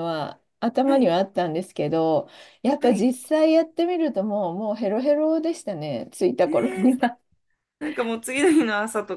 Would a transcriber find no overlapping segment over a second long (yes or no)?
yes